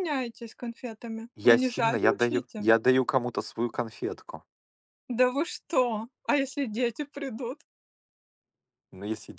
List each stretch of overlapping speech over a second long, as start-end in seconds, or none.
1.4-2.7